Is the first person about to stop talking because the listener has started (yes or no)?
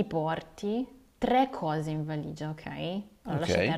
no